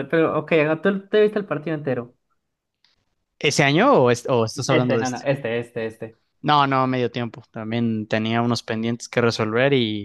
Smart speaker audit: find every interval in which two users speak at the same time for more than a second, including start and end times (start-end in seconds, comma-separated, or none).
none